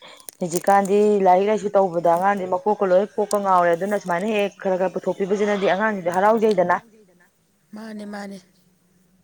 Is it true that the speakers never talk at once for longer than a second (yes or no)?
no